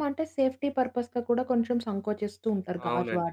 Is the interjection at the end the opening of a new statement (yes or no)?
yes